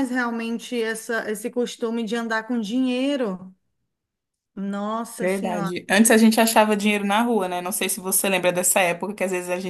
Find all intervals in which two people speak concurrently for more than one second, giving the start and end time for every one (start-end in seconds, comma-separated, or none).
none